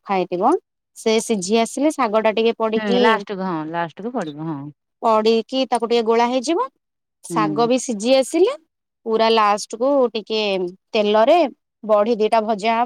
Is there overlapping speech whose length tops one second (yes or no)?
no